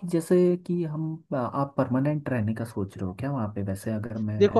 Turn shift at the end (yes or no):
yes